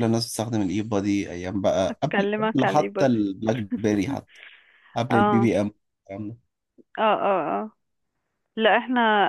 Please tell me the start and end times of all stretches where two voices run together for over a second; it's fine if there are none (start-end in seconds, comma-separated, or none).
1.9-3.2